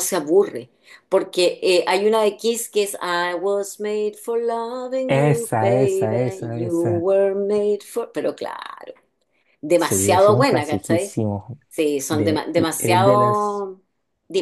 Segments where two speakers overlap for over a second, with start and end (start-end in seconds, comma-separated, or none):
5.0-7.0, 9.8-11.2, 12.1-13.7